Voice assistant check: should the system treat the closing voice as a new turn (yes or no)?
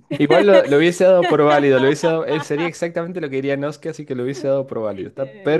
yes